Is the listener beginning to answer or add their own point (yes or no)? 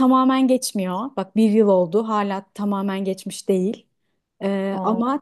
no